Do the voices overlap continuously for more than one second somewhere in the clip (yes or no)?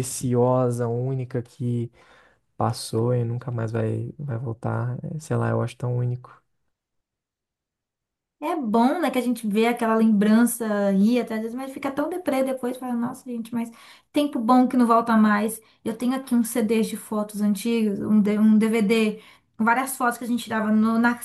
no